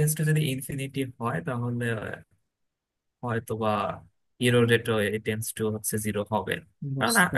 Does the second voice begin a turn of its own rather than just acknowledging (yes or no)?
no